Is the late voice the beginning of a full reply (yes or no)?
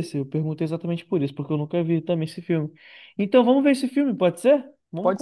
yes